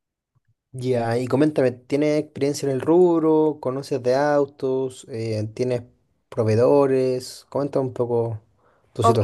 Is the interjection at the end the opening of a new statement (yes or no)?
yes